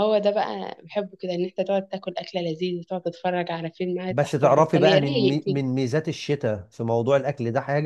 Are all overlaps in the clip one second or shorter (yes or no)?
no